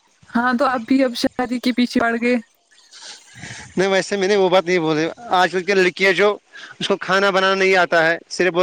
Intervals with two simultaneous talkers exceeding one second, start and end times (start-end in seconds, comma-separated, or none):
none